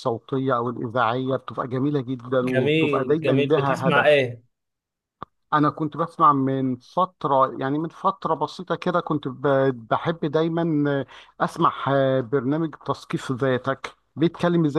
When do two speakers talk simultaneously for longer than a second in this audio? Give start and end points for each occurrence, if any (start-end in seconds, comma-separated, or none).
2.4-4.2